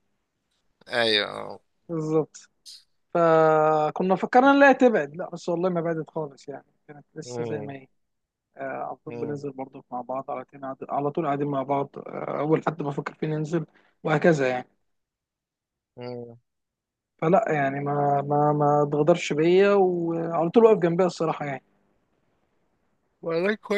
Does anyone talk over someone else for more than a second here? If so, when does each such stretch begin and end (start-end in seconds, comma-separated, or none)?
none